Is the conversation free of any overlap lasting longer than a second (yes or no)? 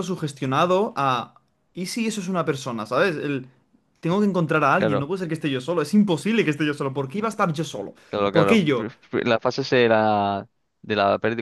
yes